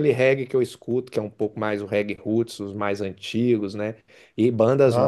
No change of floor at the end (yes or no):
yes